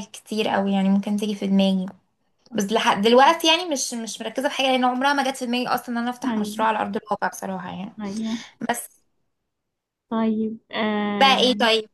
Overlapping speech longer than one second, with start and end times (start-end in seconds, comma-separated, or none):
none